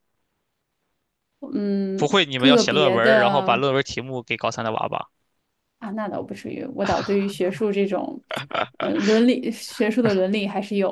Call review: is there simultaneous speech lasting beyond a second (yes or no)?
yes